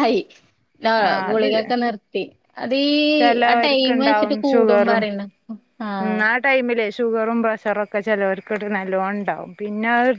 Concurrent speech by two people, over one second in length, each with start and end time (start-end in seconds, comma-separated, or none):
3.5-5.0